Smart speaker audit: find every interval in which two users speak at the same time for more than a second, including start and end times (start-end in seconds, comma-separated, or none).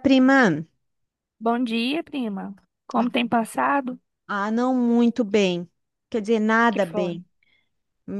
none